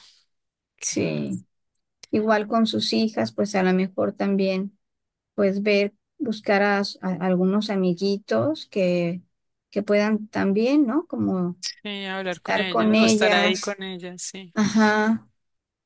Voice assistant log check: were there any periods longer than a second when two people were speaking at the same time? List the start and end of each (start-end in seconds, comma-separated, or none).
12.2-13.8